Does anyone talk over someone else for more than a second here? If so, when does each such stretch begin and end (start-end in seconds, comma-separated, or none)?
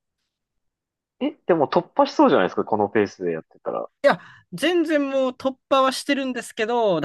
none